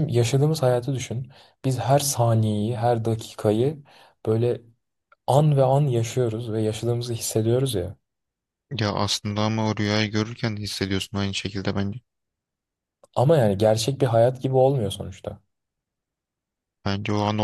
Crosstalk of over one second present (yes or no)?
no